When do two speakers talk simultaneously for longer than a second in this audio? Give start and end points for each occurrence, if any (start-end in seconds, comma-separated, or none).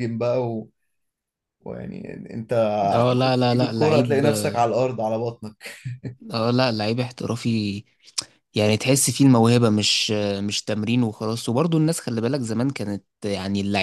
3.0-4.2